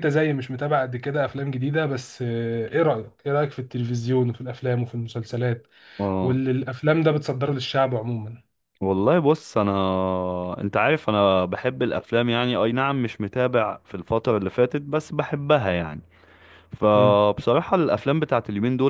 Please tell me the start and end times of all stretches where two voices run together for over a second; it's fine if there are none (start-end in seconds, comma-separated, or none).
none